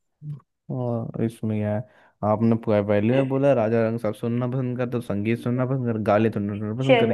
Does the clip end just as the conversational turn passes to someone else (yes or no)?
yes